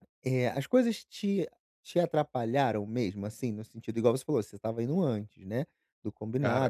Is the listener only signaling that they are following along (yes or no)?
yes